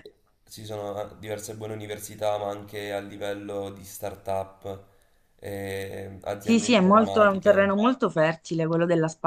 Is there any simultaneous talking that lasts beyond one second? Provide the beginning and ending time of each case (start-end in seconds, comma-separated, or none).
6.4-7.7